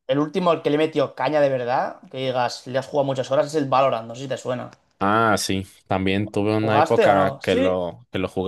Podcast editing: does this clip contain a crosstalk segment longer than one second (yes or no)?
yes